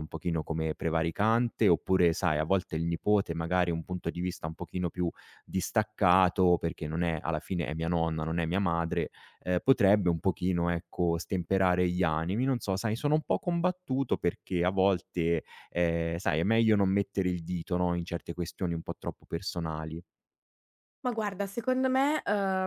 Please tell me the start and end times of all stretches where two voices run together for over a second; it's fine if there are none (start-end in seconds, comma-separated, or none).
none